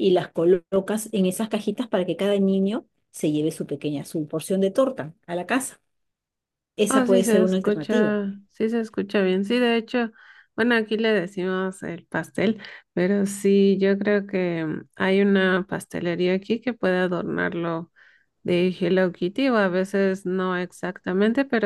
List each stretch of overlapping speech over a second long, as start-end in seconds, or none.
6.9-8.1